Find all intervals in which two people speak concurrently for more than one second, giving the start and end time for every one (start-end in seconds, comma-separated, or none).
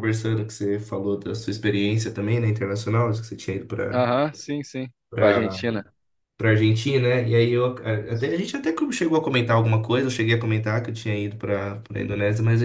none